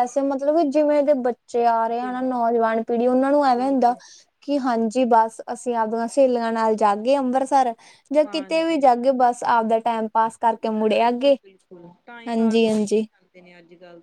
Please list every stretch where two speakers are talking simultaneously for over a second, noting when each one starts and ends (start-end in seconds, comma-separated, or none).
none